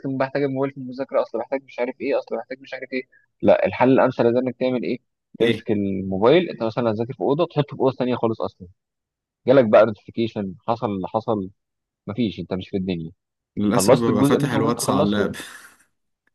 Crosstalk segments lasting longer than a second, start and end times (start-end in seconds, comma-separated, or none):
13.7-15.3